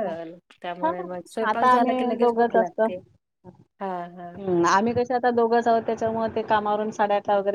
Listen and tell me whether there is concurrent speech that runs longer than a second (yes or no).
yes